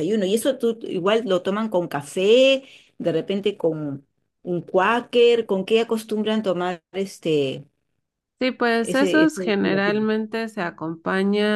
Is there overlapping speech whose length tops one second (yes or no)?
yes